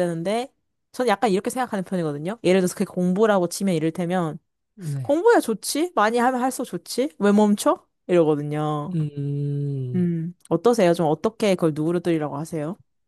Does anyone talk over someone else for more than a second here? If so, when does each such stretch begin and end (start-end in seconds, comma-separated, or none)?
none